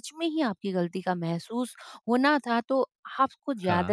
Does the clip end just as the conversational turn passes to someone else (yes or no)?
no